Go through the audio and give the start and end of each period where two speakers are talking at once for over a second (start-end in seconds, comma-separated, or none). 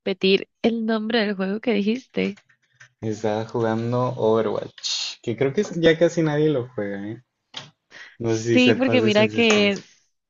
8.3-9.8